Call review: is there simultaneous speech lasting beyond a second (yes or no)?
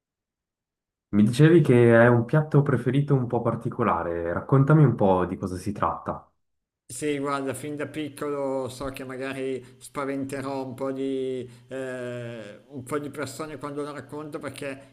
no